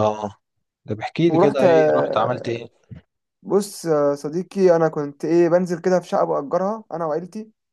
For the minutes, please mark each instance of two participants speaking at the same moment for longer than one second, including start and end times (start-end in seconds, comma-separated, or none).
1.3-2.6